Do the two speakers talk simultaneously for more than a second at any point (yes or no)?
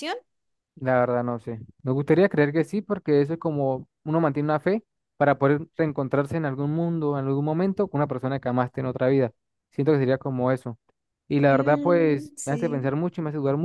yes